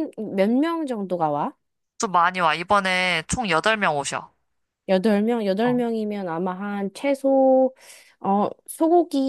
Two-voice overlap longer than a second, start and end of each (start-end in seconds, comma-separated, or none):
none